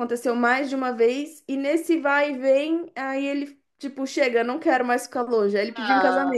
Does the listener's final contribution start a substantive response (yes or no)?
yes